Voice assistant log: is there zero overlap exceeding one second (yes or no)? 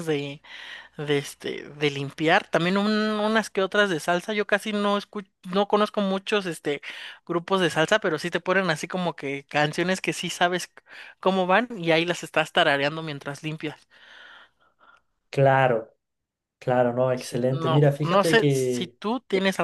no